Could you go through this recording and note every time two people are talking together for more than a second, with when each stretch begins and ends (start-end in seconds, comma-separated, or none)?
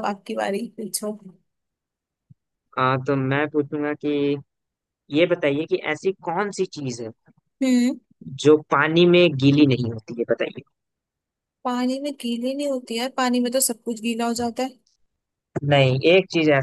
none